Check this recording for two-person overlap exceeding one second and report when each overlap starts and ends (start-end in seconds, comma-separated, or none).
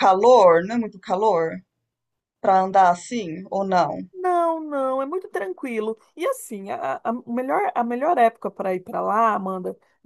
none